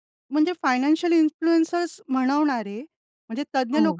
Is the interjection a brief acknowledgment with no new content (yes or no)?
yes